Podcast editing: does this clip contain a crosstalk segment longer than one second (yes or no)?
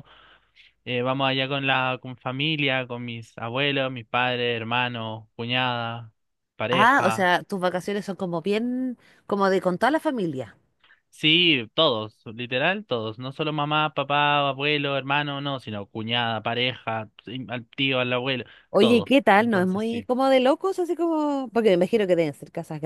yes